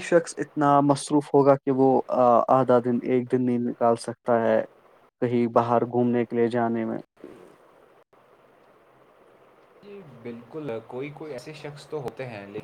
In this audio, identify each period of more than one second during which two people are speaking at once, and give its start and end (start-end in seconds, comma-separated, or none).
none